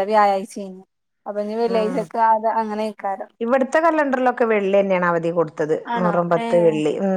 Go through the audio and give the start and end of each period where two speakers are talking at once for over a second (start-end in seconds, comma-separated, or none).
none